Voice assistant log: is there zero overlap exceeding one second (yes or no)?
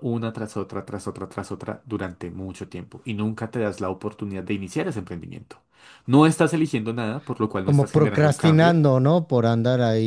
no